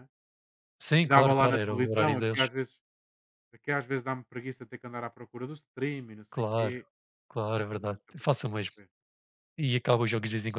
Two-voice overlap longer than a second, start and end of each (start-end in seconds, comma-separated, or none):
1.0-2.5